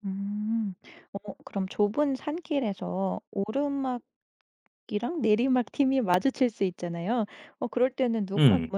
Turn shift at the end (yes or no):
no